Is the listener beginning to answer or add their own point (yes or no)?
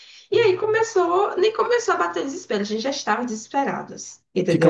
yes